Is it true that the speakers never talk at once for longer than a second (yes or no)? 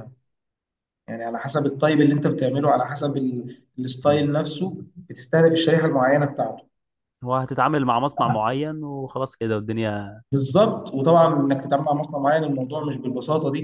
yes